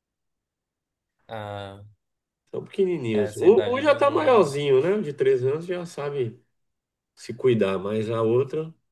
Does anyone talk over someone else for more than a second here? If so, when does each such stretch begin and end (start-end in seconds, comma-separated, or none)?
3.1-4.5